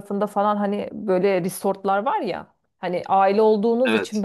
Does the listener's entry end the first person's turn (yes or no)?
no